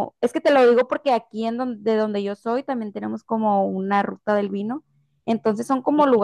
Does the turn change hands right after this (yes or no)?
no